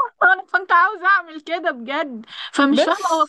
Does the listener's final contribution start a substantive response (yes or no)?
no